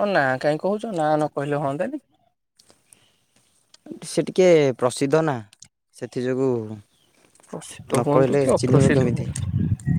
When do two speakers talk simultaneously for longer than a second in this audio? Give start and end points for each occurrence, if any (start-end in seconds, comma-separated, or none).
7.5-9.3